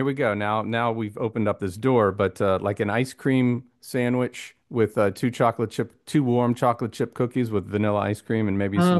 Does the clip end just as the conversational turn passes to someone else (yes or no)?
yes